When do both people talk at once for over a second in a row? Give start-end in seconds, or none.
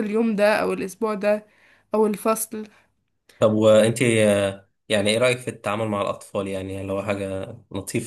none